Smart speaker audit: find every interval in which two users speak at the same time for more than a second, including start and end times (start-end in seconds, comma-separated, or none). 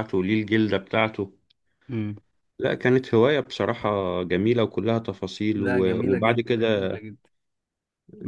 5.6-7.0